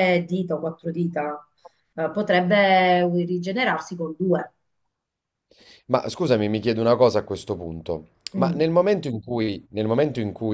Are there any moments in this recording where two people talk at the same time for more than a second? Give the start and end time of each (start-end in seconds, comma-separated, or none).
none